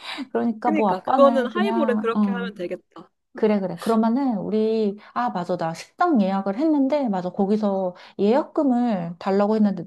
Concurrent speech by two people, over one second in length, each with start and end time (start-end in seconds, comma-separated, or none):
0.6-2.5